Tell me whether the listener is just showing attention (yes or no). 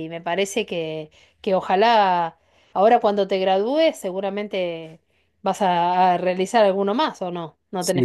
no